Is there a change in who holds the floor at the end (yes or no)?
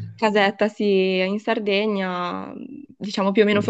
no